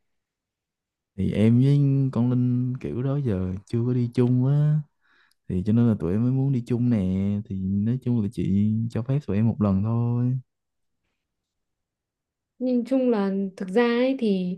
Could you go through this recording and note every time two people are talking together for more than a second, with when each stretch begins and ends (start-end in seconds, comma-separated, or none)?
none